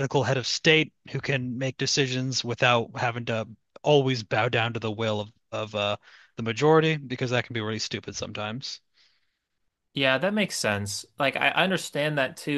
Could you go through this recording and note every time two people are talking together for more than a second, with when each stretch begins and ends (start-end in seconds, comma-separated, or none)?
none